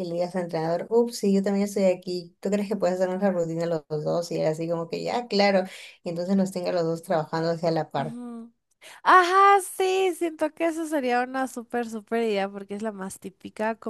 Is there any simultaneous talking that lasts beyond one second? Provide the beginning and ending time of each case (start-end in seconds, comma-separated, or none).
none